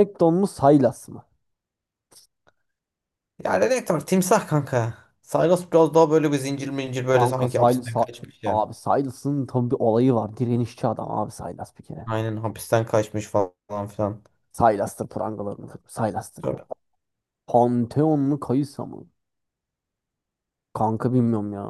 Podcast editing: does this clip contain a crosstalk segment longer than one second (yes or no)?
yes